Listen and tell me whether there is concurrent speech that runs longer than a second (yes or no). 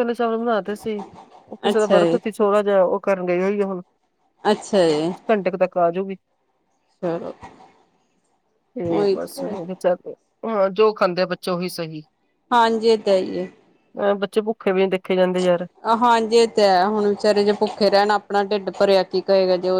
no